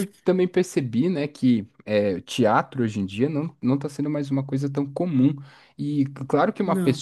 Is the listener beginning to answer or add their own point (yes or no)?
no